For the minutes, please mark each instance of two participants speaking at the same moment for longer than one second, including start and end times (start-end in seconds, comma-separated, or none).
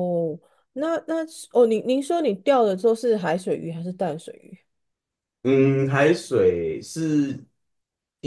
none